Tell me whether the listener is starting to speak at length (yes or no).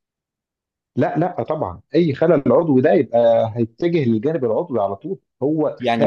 yes